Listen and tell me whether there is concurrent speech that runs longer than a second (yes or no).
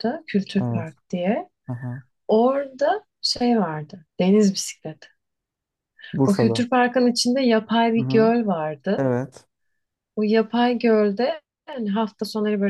no